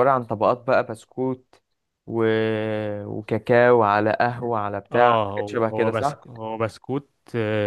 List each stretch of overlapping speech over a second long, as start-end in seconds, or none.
4.9-6.2